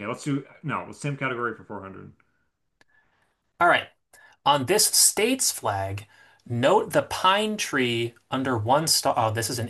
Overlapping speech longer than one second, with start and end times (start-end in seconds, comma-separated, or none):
none